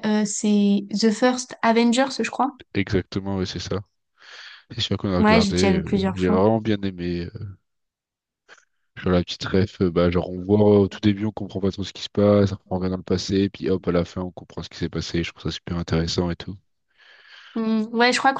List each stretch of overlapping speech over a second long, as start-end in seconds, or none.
5.2-6.4